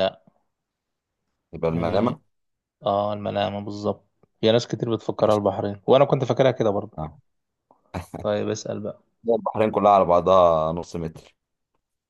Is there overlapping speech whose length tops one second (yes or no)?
no